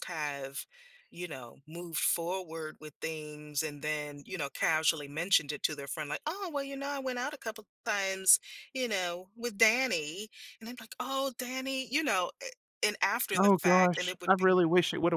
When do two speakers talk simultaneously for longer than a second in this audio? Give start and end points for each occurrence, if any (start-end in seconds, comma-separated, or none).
13.4-14.6